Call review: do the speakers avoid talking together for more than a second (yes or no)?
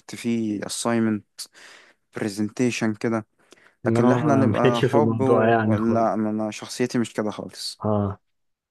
no